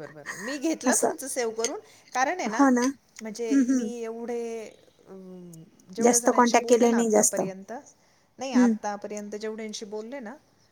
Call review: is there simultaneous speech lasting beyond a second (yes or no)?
yes